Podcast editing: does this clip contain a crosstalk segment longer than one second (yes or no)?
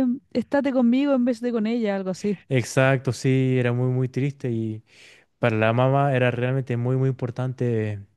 no